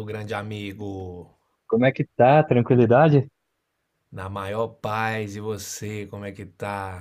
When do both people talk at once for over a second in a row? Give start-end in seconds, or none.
none